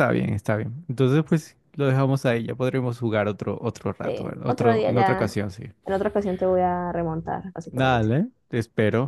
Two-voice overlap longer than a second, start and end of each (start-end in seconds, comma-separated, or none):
4.0-5.4